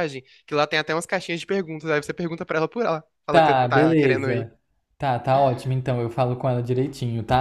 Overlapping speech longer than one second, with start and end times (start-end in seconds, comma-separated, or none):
3.3-4.5